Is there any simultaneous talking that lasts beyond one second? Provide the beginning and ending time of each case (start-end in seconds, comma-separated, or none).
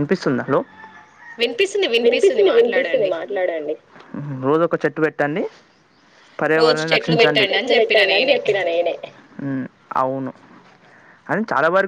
6.6-8.4